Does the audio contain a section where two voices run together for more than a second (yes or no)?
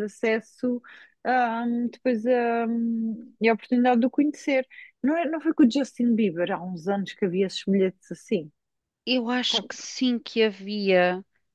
no